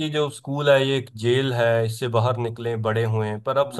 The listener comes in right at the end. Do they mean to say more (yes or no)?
no